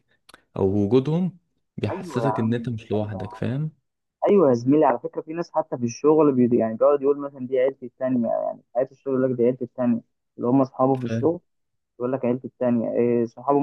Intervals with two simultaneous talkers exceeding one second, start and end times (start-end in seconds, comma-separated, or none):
1.9-3.4